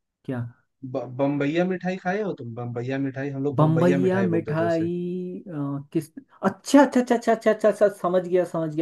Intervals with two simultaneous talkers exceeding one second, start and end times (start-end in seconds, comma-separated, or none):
3.5-4.9